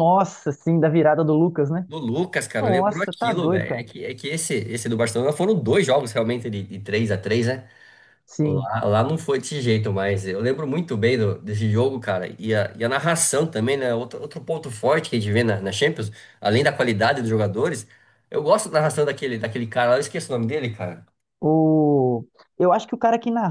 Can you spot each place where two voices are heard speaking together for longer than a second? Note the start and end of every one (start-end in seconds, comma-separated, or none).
2.6-3.9